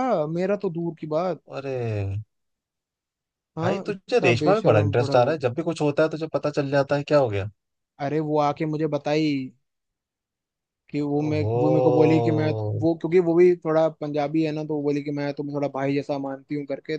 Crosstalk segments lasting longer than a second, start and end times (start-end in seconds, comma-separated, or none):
3.6-5.4